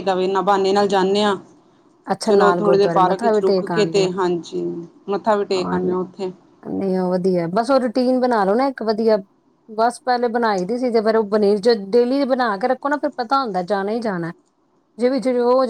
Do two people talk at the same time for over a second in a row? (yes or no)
yes